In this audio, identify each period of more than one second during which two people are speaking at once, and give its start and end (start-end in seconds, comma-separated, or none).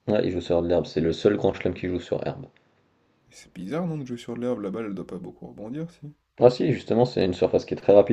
none